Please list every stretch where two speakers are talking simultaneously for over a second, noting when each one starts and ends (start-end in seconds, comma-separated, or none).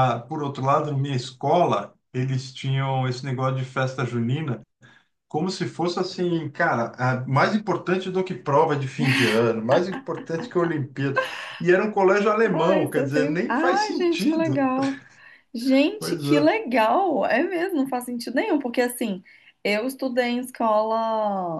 12.4-14.7